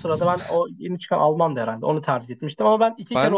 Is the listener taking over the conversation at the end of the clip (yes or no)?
yes